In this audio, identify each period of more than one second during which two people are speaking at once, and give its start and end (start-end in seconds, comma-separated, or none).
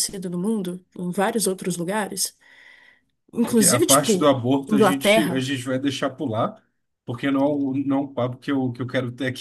3.5-5.5